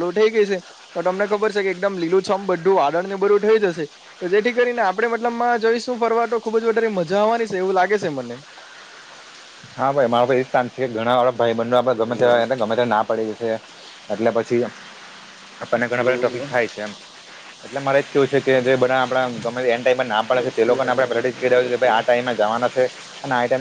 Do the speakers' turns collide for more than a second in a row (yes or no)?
yes